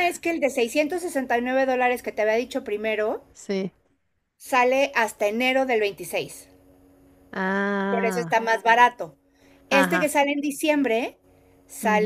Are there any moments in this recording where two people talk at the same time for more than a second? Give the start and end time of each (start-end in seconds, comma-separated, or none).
none